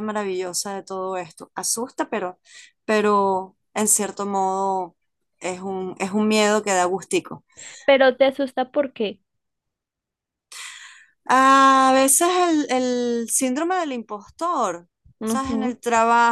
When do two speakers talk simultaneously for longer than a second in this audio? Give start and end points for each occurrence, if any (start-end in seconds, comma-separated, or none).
none